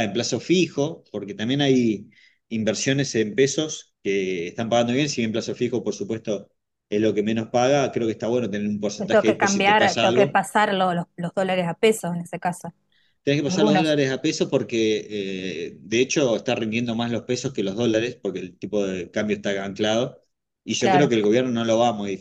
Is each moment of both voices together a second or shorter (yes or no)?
no